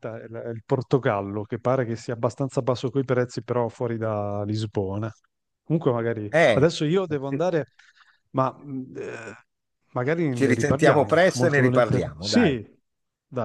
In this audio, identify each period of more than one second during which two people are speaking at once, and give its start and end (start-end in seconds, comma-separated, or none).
10.3-12.5